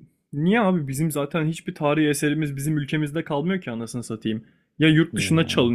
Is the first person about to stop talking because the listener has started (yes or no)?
no